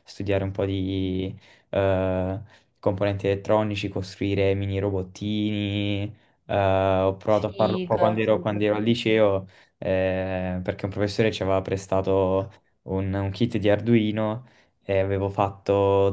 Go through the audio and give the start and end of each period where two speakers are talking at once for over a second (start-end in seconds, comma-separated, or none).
7.3-9.3